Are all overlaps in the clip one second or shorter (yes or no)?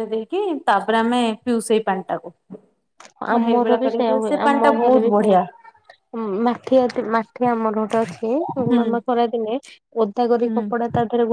no